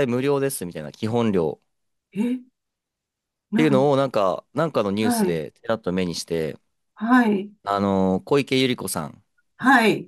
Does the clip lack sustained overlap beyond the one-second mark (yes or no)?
yes